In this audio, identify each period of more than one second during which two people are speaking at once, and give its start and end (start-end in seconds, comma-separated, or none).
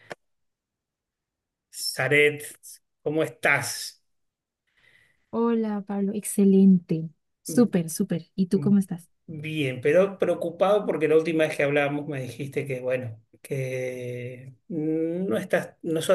none